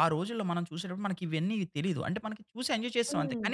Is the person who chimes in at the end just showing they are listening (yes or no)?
yes